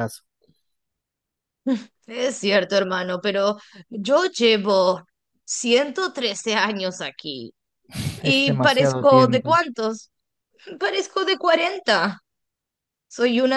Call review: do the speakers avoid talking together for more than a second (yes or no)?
no